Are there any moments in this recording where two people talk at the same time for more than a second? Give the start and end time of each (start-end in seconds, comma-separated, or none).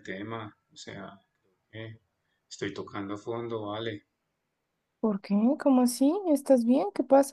none